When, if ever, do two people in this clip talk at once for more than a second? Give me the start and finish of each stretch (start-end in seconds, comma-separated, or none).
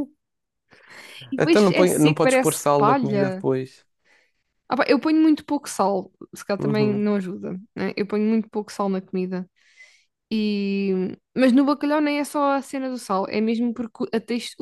1.4-3.5